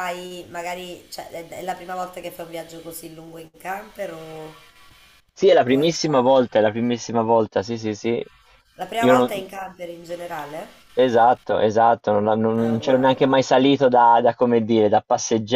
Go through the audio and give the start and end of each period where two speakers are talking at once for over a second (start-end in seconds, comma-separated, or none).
none